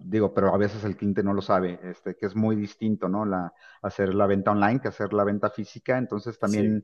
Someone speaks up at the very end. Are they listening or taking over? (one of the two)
listening